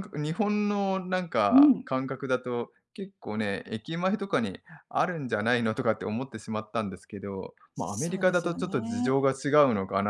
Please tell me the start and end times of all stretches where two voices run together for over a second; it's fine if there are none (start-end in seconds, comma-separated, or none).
7.8-9.2